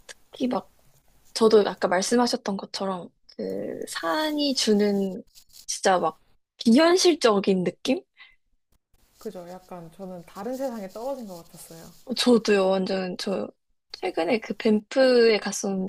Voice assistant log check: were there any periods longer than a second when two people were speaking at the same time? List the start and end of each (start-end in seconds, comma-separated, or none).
none